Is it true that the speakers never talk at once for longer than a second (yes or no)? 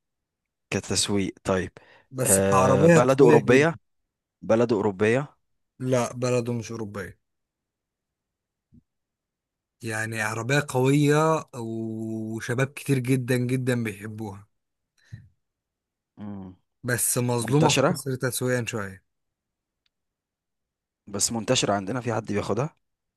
no